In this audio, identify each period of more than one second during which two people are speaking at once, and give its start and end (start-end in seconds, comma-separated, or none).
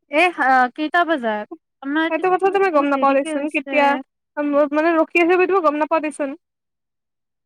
2.1-3.7